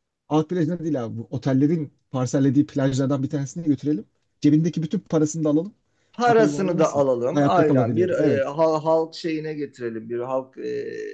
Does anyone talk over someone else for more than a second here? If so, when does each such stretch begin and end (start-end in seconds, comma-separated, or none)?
6.3-8.4